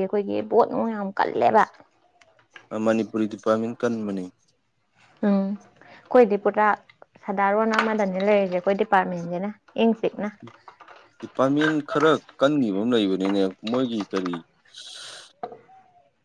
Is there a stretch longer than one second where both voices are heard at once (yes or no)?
no